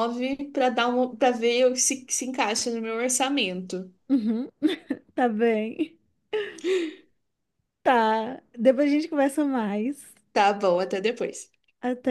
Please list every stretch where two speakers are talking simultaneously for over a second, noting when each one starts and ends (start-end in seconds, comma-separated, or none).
none